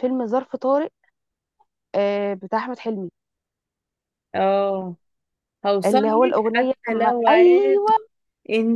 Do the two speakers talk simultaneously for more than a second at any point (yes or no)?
yes